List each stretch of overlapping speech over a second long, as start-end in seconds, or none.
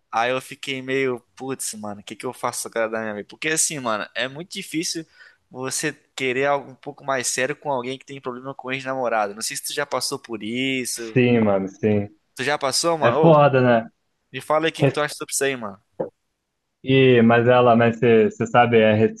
none